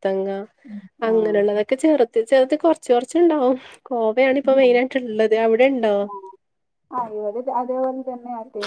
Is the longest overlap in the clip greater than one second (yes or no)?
no